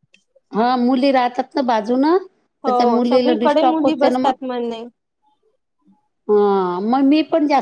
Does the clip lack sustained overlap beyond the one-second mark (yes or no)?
no